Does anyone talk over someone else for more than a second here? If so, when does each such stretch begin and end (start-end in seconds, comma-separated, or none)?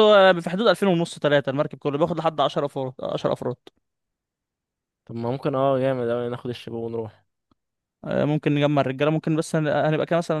none